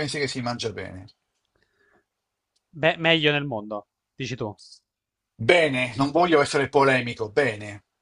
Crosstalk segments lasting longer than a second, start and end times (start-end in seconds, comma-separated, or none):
none